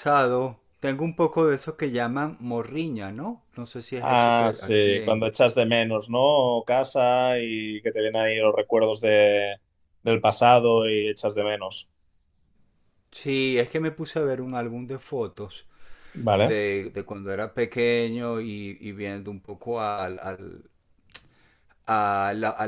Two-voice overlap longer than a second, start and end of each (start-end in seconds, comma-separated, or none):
4.0-5.2